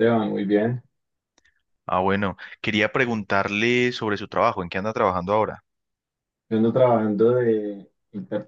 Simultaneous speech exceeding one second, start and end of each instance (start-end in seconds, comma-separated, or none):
none